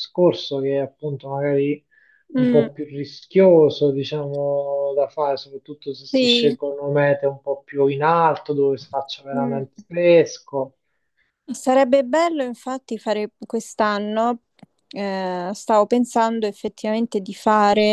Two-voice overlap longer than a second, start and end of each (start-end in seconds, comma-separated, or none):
none